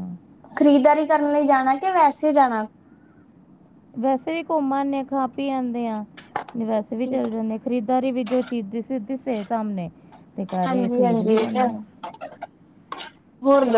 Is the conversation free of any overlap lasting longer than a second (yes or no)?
no